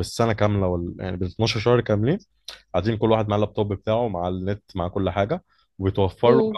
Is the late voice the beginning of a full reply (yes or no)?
no